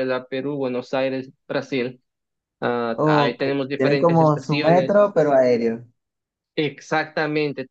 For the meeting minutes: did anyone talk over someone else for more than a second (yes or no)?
yes